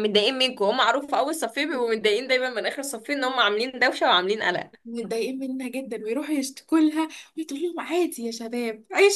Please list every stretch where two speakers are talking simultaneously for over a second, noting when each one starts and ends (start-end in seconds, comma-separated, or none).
none